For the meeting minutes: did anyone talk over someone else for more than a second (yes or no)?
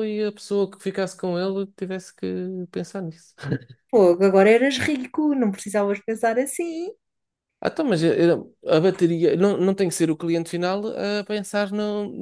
no